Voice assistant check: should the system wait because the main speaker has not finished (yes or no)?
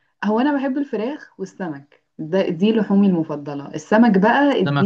yes